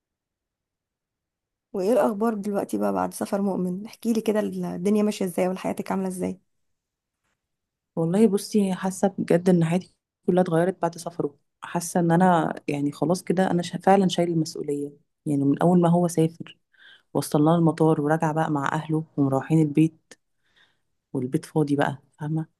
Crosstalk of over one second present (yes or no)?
no